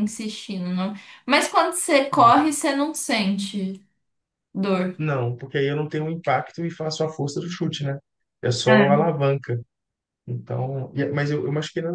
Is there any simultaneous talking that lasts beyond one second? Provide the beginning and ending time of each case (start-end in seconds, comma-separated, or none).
none